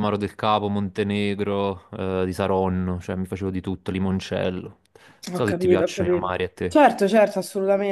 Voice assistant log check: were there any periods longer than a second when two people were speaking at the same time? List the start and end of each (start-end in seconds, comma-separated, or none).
5.3-6.8